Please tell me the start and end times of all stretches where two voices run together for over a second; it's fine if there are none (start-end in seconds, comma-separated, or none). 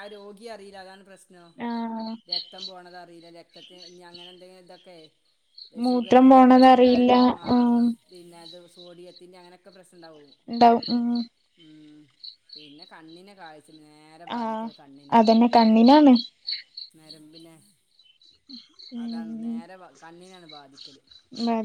5.9-7.1